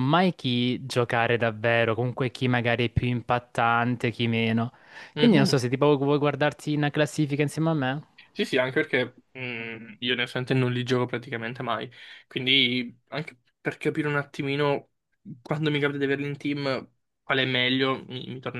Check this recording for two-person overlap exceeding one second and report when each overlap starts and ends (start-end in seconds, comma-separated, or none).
none